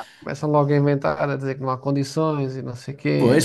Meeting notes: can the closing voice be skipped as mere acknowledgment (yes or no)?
no